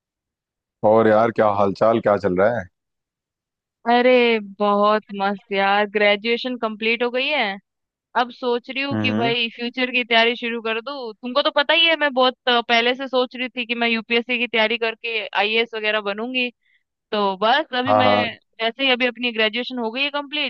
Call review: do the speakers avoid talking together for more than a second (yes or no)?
yes